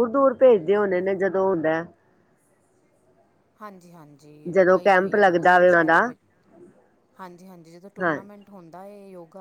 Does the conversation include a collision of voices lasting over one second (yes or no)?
yes